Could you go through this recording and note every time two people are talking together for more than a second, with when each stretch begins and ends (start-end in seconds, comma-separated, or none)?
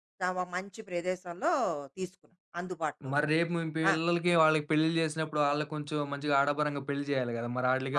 none